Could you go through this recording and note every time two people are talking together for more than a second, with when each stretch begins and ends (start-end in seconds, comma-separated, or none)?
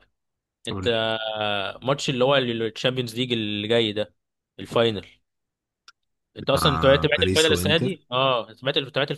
6.5-8.0